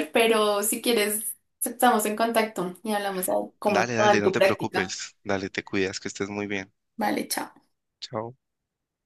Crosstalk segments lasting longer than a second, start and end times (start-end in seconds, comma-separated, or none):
3.7-5.0